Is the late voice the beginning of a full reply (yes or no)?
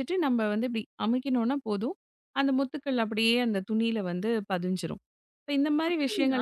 yes